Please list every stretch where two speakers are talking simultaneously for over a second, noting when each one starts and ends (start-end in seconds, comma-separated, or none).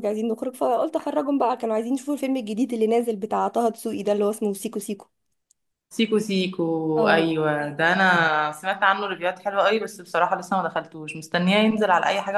none